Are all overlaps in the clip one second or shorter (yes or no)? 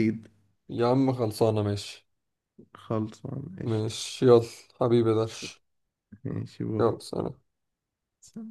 yes